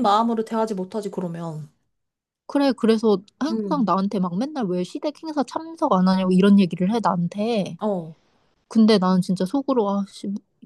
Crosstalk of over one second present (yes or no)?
no